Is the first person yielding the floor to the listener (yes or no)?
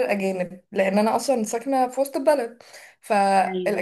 no